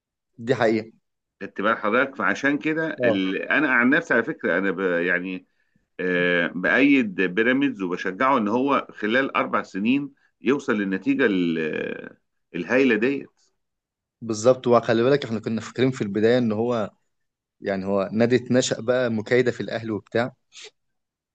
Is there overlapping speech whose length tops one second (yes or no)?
no